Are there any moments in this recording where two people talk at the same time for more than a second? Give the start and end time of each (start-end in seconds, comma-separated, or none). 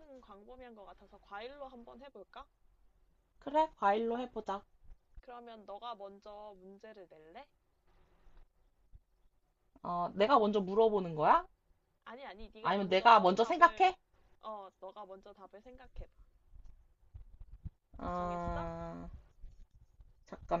12.6-13.9